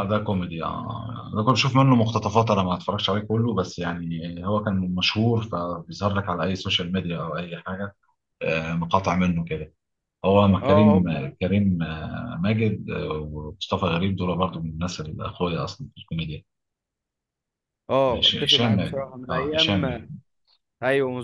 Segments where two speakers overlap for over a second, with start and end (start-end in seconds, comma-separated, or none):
18.1-19.8